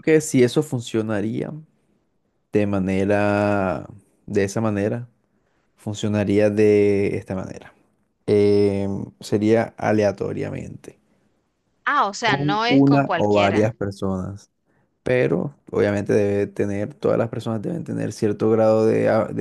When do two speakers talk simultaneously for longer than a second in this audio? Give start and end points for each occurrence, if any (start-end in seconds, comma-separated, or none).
12.2-13.7